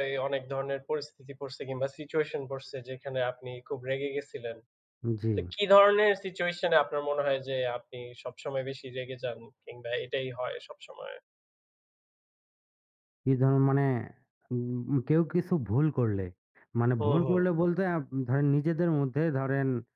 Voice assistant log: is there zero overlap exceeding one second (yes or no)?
yes